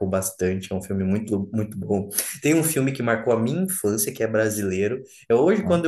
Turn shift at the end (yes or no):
no